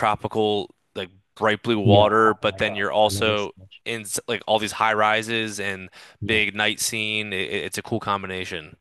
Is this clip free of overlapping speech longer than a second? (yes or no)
no